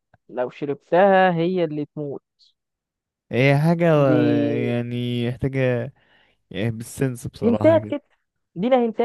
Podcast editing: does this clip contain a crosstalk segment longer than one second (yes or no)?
no